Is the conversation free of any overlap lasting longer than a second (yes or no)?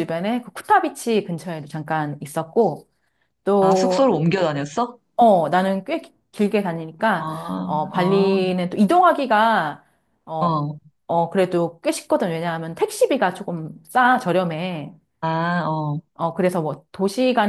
yes